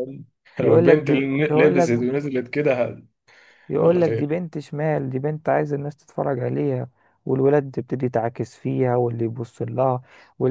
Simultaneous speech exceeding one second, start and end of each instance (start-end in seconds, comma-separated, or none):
0.6-1.9